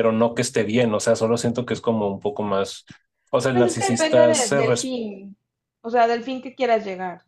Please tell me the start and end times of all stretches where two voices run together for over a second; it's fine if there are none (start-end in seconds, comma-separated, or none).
3.5-5.0